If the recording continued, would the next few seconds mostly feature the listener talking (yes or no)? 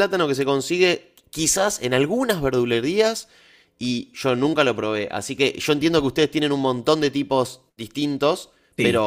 no